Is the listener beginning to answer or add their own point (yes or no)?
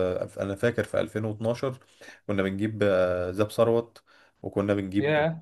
no